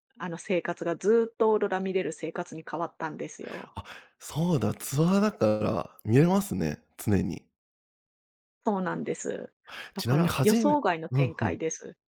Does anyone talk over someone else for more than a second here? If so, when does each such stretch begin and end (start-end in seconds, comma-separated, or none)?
10.0-11.6